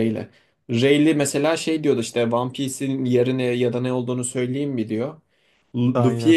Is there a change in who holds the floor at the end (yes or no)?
no